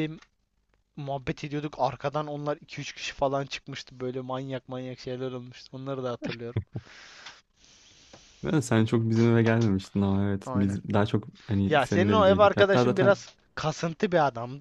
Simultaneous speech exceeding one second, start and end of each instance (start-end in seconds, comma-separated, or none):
11.7-13.1